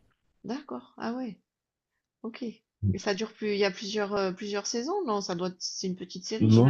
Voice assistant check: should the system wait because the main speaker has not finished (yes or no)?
no